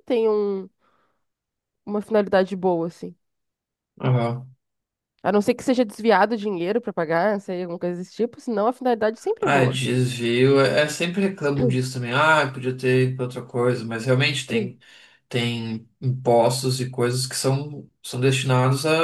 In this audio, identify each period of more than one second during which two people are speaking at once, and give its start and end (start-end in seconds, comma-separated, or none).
none